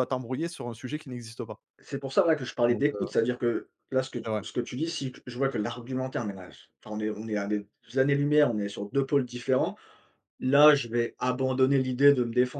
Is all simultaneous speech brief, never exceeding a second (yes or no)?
yes